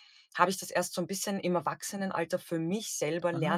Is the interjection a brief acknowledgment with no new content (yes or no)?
no